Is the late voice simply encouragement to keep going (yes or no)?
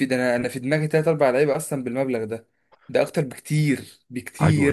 no